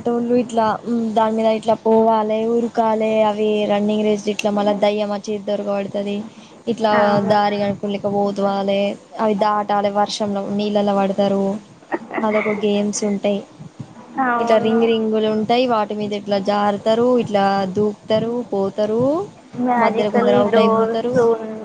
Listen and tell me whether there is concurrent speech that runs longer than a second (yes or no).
yes